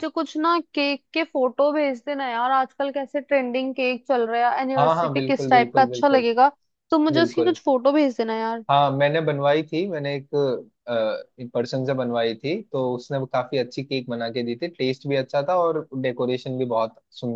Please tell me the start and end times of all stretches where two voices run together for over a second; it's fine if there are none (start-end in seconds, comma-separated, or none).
4.8-6.3